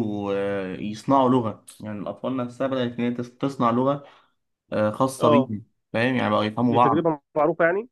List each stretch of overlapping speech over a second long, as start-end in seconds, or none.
none